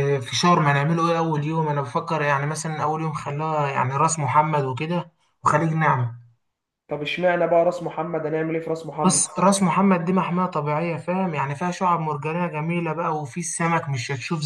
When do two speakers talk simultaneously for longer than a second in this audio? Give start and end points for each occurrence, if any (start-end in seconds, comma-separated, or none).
none